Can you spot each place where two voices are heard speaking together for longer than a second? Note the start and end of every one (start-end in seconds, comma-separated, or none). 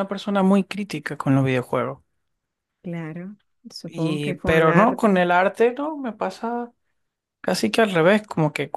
3.9-5.2